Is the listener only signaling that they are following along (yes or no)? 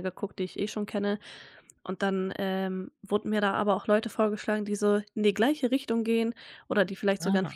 yes